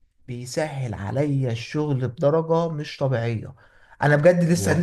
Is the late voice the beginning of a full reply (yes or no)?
no